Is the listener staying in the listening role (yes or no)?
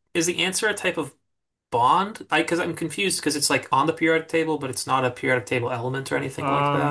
no